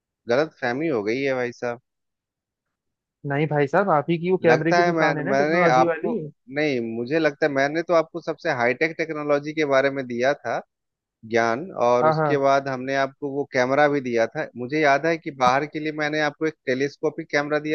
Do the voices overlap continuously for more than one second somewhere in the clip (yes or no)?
yes